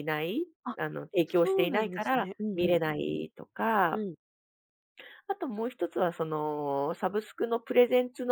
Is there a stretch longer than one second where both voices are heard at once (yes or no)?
yes